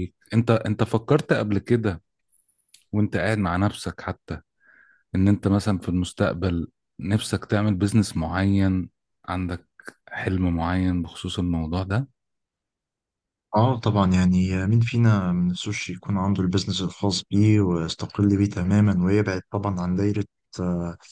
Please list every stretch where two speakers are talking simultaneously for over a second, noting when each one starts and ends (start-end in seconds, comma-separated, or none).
none